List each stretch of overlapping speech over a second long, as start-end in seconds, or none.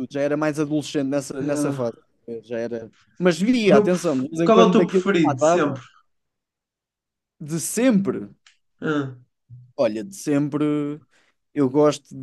3.7-5.8